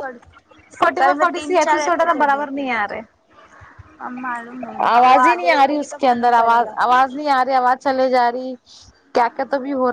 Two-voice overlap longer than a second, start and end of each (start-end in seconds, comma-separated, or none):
1.0-2.6, 4.9-6.7